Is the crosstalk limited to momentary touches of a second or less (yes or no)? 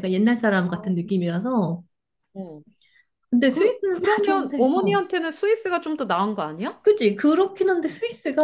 no